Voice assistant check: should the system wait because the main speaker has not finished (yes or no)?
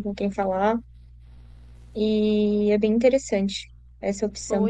no